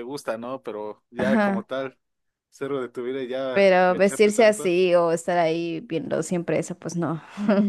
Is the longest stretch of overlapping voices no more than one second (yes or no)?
no